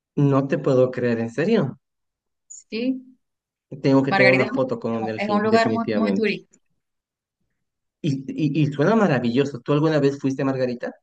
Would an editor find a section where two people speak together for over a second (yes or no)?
yes